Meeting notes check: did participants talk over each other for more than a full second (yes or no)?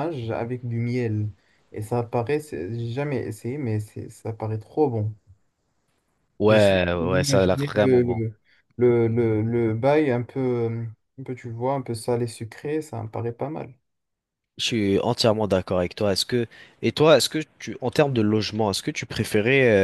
yes